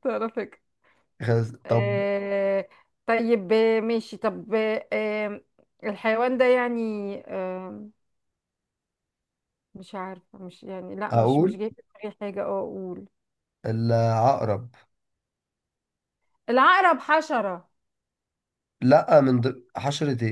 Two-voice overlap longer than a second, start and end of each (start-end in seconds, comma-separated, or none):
none